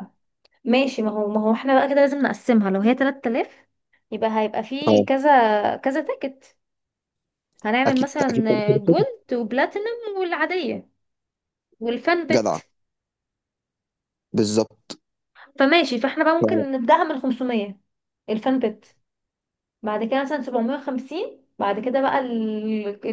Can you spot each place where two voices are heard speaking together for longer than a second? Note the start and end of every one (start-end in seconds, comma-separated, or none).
7.8-9.1